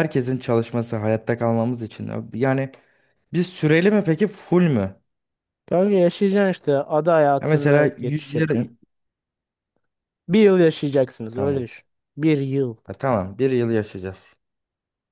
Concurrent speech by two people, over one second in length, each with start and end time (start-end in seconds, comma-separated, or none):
7.4-8.7